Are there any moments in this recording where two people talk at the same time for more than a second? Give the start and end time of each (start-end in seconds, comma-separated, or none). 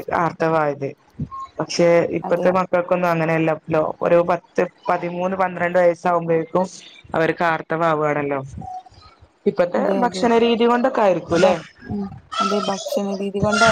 none